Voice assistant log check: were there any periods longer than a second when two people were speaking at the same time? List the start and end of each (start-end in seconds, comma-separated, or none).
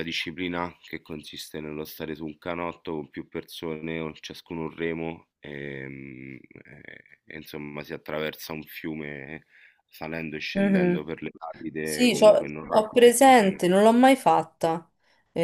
11.8-13.6